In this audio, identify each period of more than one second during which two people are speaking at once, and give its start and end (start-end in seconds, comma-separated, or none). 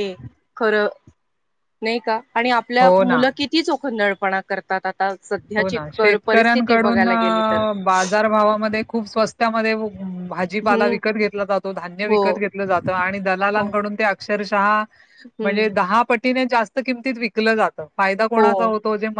5.6-7.0